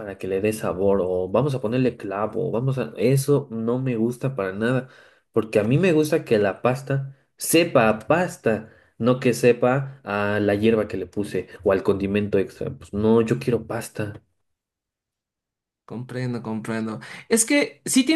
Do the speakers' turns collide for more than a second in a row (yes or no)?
no